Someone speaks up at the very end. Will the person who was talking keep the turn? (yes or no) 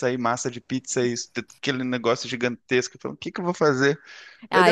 no